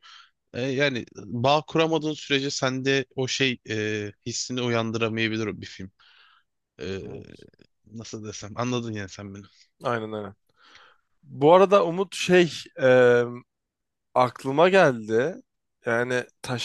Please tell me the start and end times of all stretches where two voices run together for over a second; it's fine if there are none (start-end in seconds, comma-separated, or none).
none